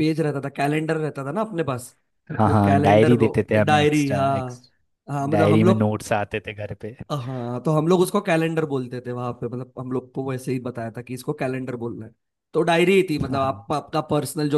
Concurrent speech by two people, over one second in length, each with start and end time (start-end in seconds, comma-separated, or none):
2.5-4.7